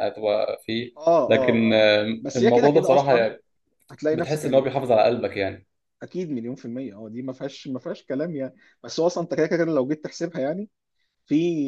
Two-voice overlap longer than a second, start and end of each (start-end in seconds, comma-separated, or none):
1.3-3.3